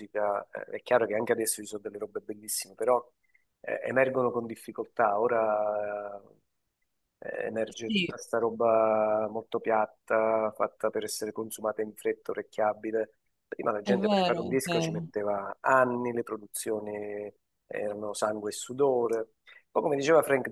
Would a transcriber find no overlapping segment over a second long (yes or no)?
no